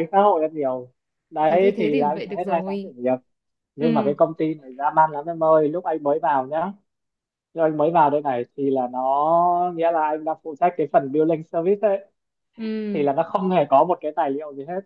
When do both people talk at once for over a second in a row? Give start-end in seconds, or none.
1.5-2.9